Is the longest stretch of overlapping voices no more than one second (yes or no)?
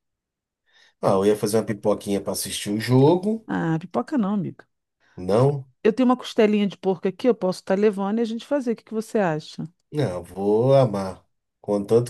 yes